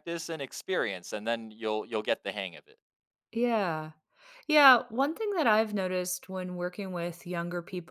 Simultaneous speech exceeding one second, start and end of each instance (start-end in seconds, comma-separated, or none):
none